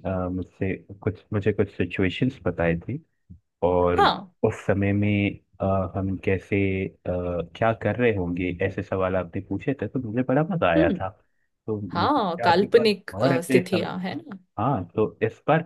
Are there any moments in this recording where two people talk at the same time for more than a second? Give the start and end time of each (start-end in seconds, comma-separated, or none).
11.9-13.9